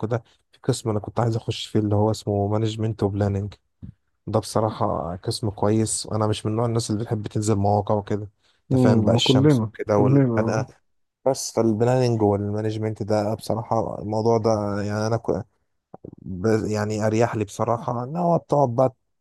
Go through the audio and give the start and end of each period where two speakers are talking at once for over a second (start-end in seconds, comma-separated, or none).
8.7-10.7